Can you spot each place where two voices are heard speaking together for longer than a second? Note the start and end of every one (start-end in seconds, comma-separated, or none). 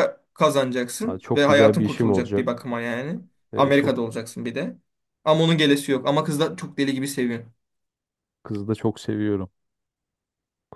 1.0-2.7